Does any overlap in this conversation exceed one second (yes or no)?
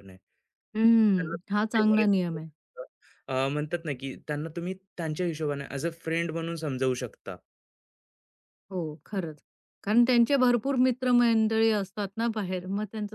yes